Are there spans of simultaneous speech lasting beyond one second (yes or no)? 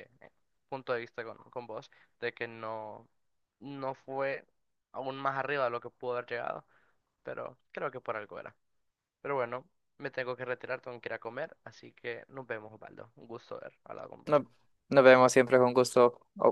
no